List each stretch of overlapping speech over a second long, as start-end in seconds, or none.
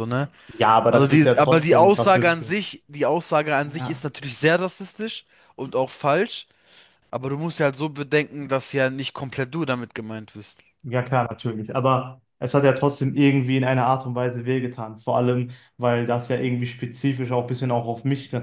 0.9-2.7